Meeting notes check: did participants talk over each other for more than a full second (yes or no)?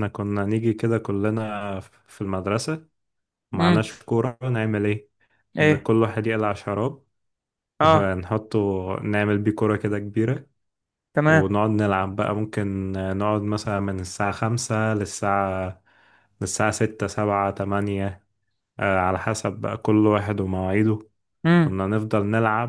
no